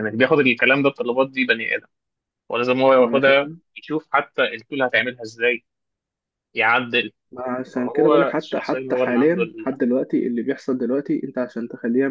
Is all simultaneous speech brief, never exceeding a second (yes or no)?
no